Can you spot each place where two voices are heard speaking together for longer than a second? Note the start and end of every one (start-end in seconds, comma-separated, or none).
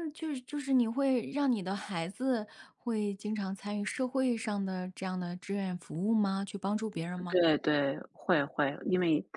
none